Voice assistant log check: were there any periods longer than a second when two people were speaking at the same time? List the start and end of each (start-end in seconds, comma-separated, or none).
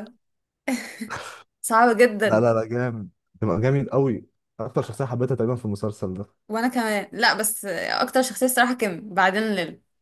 none